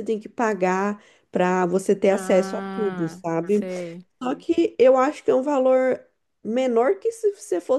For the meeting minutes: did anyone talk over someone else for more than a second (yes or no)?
yes